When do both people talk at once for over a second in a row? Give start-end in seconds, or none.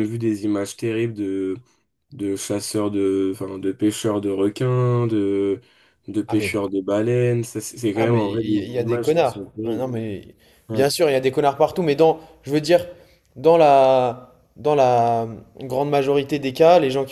7.9-9.9